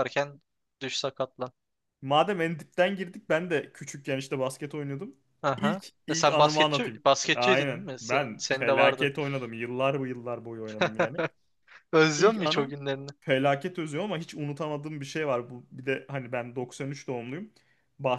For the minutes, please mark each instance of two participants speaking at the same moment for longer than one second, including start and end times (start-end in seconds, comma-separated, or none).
5.6-9.1